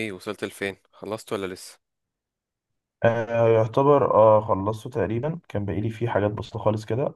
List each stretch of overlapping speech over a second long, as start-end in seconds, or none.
none